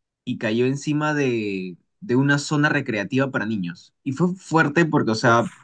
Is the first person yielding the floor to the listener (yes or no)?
no